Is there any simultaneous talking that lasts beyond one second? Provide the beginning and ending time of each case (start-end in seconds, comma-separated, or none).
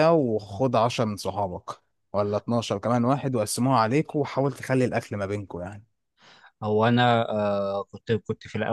none